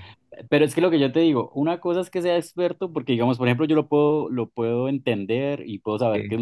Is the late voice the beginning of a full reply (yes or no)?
no